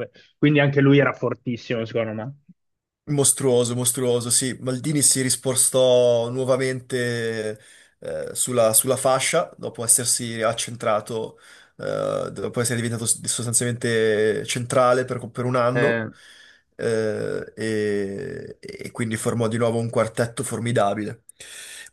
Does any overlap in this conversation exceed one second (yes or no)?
no